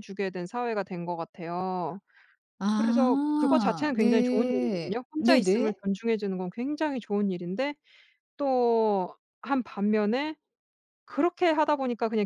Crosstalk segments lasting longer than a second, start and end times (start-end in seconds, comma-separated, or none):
2.8-5.8